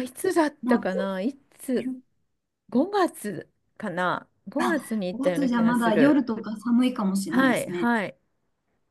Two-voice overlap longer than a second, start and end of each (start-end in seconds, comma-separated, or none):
4.6-6.2